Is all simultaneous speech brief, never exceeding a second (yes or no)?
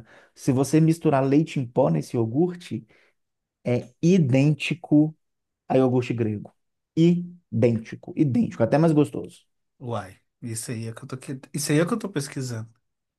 yes